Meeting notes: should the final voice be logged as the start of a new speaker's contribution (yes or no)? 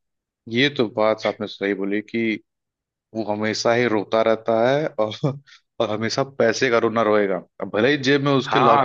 no